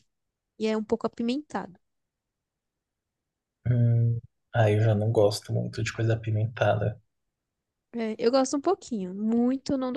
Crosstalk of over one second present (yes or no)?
no